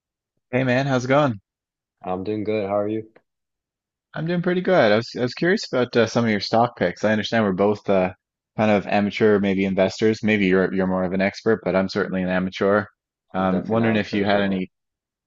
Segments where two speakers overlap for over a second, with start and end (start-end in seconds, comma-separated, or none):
13.3-14.7